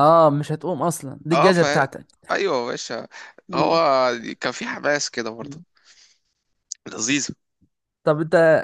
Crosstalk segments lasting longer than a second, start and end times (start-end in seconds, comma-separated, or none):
none